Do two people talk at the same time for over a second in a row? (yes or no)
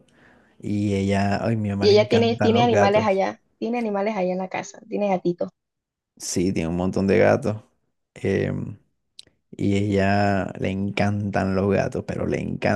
yes